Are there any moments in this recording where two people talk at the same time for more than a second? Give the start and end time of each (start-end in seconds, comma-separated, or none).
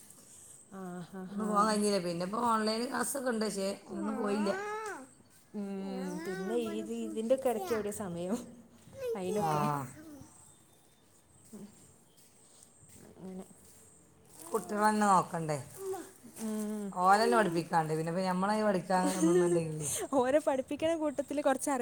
6.0-7.7